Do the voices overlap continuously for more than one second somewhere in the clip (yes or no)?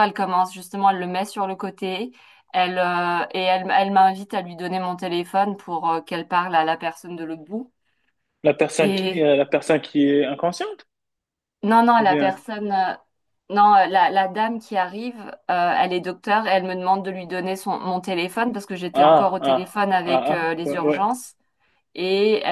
yes